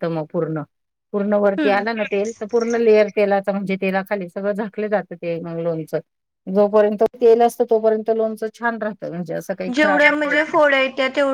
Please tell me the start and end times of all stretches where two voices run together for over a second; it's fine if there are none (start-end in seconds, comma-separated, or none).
none